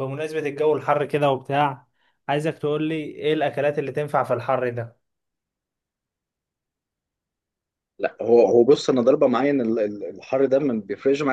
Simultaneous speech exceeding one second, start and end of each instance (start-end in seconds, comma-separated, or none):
none